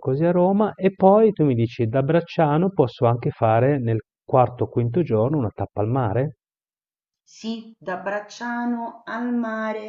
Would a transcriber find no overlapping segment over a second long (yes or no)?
yes